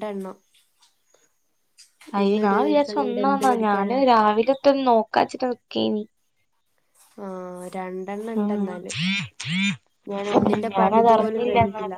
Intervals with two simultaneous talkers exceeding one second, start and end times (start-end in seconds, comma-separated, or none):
2.2-4.0